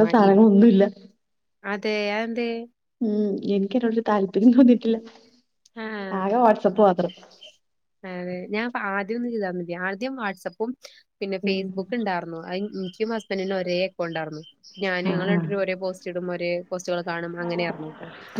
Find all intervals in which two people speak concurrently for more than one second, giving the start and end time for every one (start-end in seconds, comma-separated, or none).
none